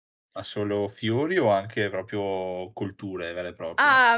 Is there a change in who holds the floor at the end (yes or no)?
yes